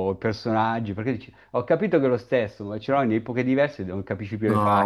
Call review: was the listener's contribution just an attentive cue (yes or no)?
no